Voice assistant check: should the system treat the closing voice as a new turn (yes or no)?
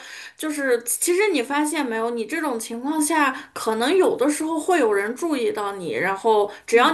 no